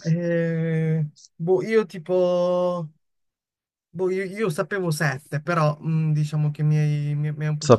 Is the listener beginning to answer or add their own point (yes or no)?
yes